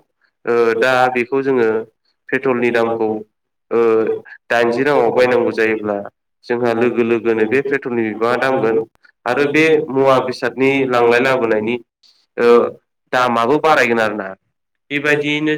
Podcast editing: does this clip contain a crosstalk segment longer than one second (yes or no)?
yes